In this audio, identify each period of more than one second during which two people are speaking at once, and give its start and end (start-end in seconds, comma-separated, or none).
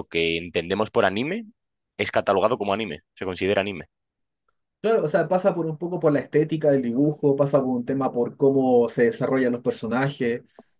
none